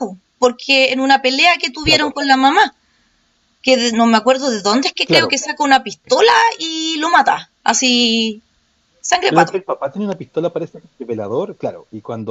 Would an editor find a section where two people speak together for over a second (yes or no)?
no